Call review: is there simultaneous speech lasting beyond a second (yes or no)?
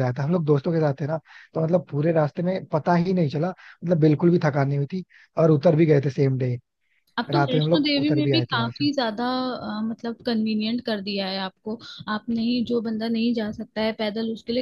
yes